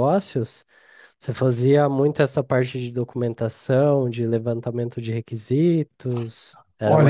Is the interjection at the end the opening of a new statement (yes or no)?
yes